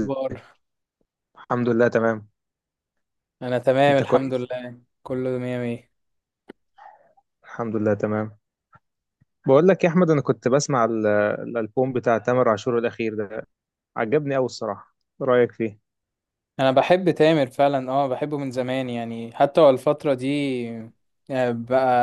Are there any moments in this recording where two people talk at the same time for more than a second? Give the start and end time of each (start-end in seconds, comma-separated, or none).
none